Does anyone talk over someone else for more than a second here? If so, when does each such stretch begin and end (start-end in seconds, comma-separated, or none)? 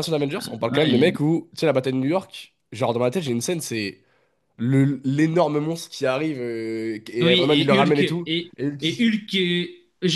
7.2-9.1